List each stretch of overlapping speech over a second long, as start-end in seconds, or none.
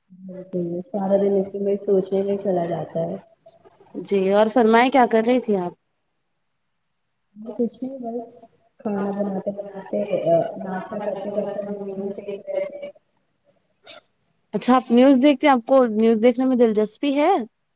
none